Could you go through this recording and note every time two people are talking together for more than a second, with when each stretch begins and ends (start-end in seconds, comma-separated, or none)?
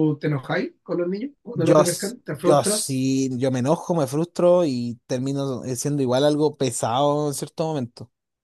1.5-3.0